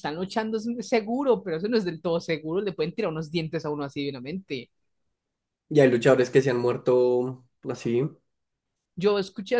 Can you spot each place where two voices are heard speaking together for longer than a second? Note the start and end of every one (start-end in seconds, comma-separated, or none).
none